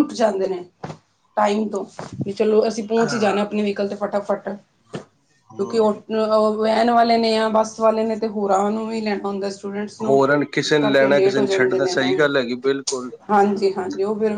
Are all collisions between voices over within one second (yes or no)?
yes